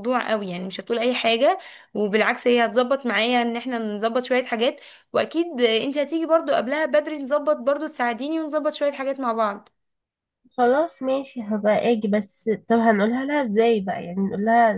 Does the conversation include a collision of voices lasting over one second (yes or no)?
no